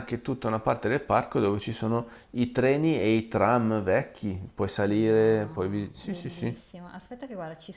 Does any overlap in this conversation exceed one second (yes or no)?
yes